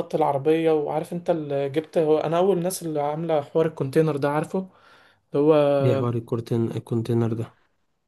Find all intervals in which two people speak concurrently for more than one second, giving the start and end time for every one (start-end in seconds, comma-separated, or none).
none